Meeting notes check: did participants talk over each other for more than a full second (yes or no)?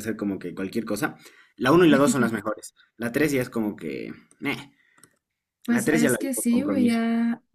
yes